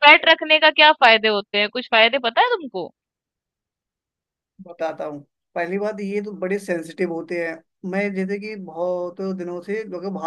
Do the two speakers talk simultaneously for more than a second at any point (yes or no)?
no